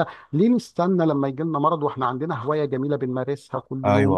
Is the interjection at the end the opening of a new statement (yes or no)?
no